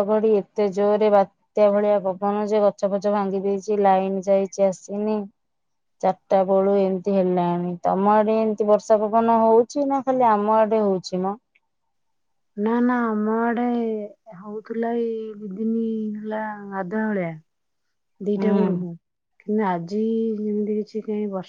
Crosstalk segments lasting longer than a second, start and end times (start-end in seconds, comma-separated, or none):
none